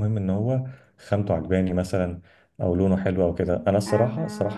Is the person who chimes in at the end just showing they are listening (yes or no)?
yes